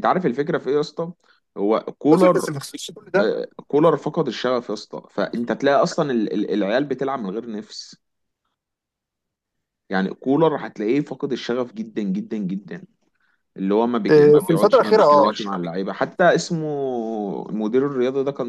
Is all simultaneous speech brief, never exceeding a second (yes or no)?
no